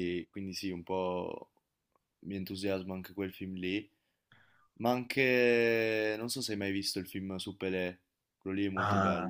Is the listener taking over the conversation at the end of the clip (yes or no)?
yes